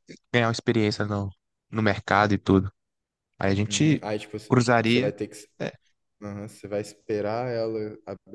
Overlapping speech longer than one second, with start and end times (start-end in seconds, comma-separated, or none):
none